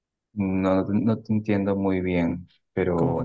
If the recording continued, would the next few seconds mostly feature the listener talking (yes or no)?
yes